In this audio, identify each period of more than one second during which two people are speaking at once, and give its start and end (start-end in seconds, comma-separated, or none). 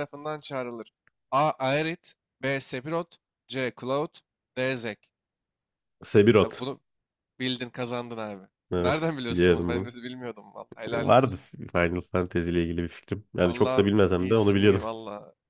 8.7-9.9, 13.4-14.8